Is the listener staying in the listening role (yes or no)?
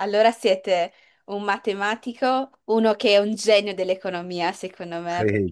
no